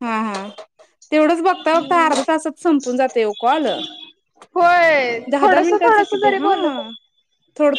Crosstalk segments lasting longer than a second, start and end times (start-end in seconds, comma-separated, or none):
5.3-6.9